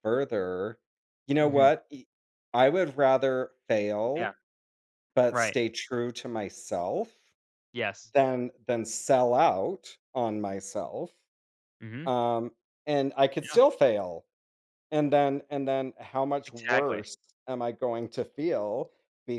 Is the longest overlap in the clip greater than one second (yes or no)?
no